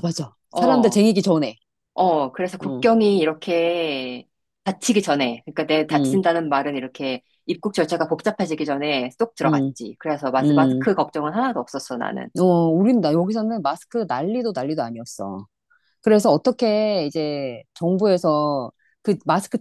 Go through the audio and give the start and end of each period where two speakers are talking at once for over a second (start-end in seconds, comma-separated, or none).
none